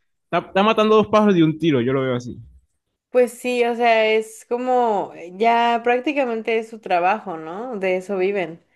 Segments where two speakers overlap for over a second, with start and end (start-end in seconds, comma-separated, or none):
none